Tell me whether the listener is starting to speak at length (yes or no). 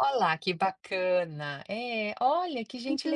yes